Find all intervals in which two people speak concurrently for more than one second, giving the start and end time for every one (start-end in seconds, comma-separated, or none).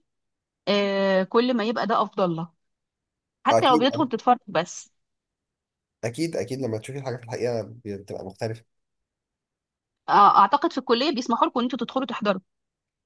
none